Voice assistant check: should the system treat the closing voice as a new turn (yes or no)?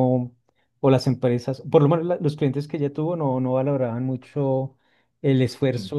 no